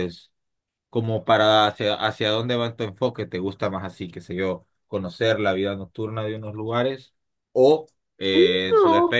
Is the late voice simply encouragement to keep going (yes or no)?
yes